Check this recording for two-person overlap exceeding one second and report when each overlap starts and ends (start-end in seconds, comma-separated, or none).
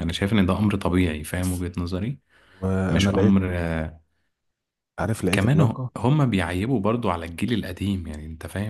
none